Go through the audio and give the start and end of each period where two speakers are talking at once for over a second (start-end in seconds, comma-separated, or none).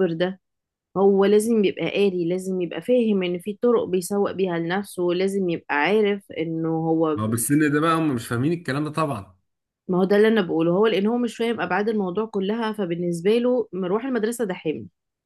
none